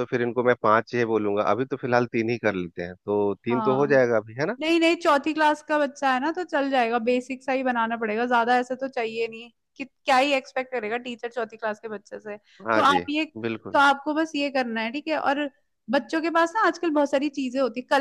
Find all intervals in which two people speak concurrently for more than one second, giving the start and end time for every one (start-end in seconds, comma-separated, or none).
none